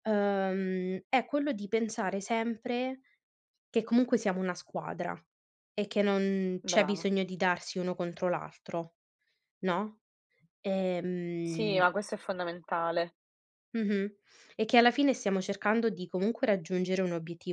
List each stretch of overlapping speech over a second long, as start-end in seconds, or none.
none